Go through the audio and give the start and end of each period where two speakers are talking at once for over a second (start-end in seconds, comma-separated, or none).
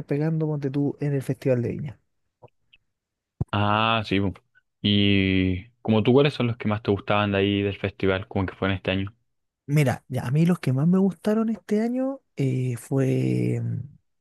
none